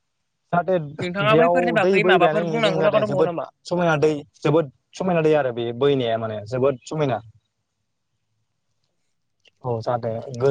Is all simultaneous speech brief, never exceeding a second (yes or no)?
no